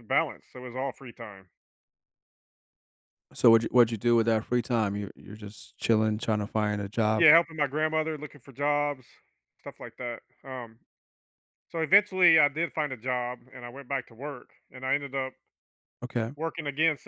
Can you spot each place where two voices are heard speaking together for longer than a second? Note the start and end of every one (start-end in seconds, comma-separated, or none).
none